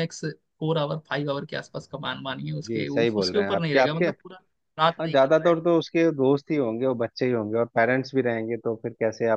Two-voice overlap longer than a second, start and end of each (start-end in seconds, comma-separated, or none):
2.7-4.0